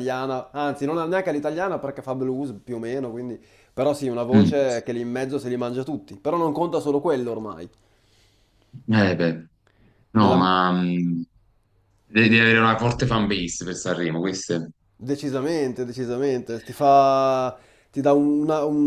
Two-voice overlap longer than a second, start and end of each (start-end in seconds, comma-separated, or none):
none